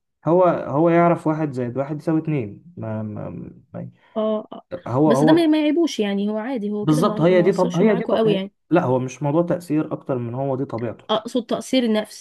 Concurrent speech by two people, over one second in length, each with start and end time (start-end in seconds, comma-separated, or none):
6.8-8.5